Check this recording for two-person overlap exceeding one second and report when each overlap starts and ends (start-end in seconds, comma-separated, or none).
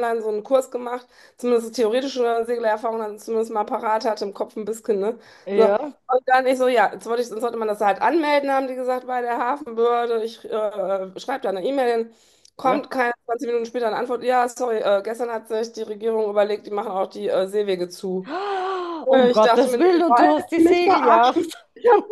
19.1-21.6